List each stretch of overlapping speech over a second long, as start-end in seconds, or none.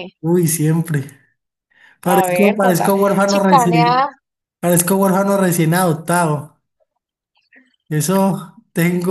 2.0-4.1